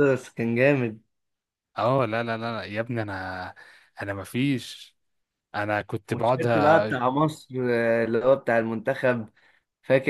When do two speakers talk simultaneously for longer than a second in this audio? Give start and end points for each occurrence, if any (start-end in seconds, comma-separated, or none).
none